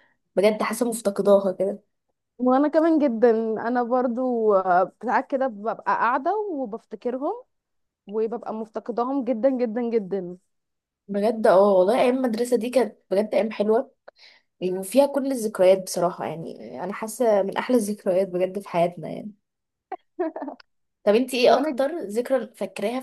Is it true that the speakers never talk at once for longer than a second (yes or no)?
yes